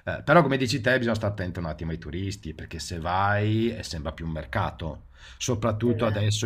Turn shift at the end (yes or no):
no